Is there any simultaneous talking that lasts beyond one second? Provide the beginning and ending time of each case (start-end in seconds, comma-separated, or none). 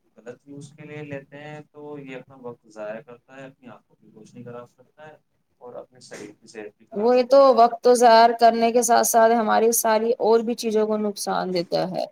none